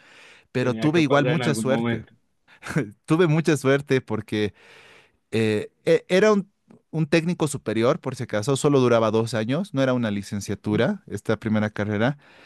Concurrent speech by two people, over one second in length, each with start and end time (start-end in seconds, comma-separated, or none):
0.6-2.0